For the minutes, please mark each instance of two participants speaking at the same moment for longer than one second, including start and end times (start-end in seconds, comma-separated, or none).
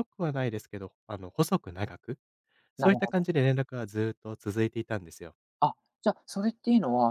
none